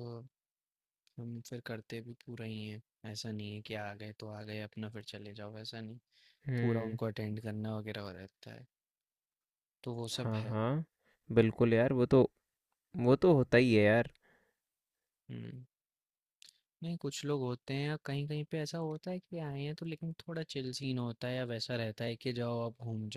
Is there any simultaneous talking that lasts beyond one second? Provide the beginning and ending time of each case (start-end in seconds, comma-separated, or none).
none